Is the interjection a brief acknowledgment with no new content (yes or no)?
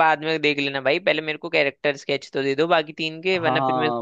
no